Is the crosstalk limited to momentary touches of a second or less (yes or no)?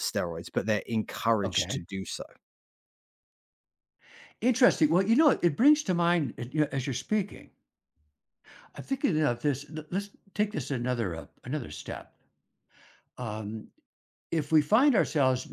yes